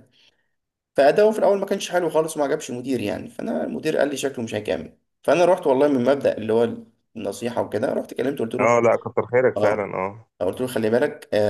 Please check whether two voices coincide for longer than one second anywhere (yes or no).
no